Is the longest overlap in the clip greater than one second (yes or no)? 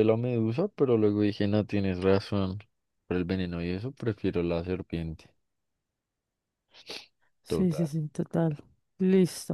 no